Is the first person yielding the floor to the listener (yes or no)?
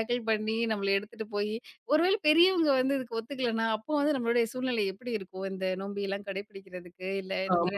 yes